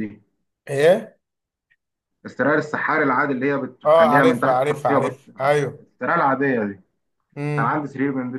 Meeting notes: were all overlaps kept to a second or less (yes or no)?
no